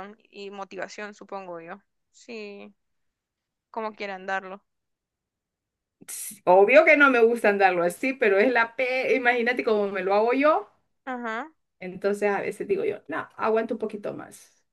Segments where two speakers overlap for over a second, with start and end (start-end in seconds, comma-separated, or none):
none